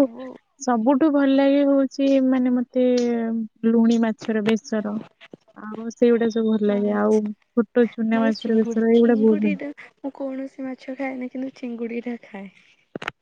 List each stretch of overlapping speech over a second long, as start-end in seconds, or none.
8.2-9.5